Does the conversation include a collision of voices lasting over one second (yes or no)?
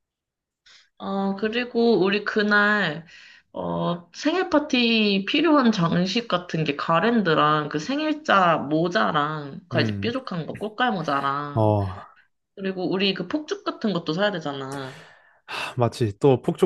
no